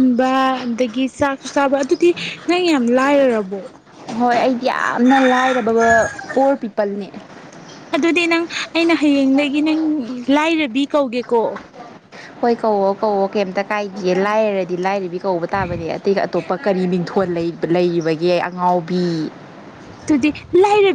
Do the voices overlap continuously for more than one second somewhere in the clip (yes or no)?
no